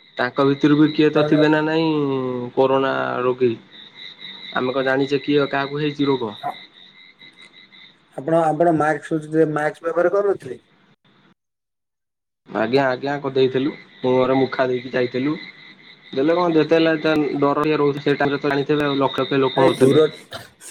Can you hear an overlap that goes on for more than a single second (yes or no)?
no